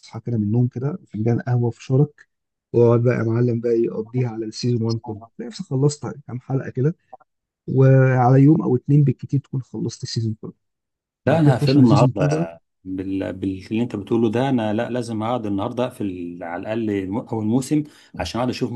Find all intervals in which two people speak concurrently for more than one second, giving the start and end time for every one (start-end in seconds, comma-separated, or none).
11.3-12.5